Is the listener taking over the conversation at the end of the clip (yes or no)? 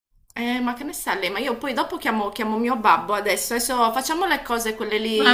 yes